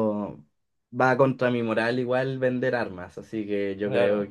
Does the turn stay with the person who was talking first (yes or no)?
yes